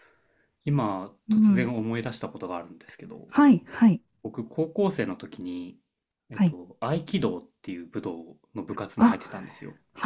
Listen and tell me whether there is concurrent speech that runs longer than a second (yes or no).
no